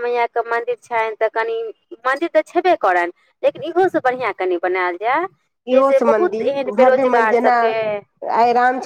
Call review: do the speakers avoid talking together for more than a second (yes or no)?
no